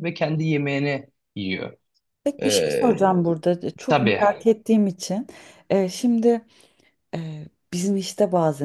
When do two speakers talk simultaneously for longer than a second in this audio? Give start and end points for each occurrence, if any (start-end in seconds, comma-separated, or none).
none